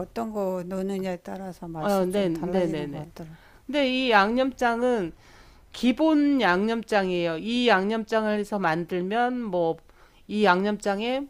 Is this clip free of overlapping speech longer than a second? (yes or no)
no